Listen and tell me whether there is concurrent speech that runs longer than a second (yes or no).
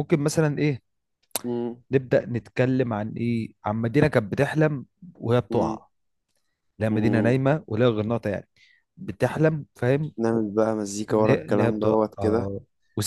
yes